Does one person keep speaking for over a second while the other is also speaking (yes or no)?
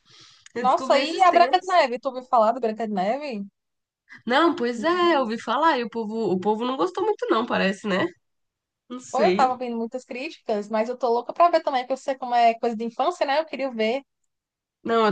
yes